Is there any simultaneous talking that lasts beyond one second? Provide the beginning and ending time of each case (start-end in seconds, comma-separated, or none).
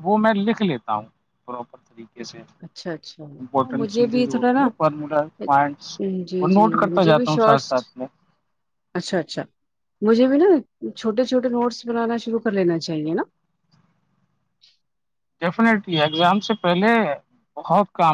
2.6-4.7, 6.4-7.7